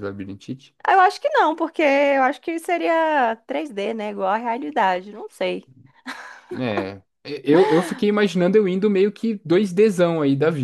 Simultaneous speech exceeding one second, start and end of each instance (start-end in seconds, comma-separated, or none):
none